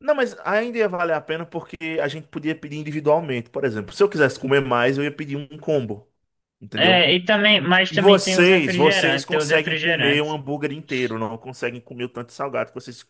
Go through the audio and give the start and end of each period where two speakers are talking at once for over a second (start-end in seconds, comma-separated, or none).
7.9-10.4